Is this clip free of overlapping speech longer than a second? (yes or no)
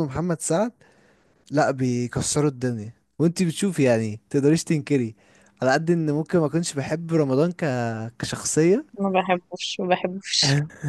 yes